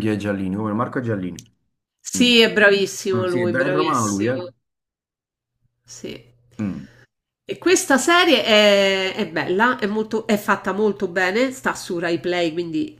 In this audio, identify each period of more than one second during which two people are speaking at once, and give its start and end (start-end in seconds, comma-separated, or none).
3.2-4.4